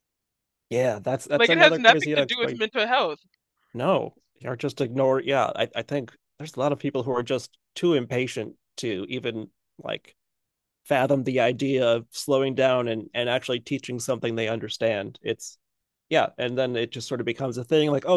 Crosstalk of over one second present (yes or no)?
yes